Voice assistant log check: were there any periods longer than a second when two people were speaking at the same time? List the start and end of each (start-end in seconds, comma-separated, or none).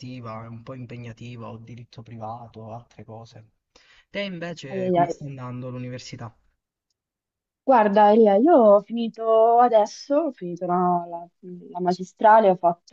none